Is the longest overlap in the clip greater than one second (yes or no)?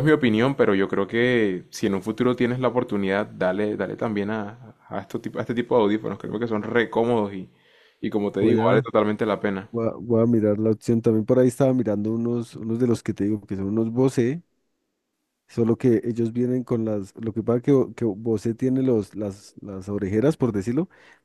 no